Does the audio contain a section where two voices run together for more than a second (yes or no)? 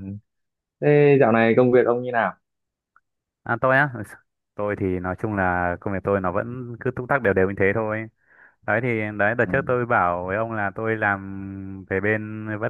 no